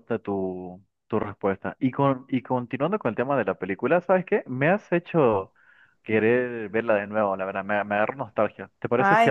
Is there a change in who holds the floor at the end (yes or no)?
yes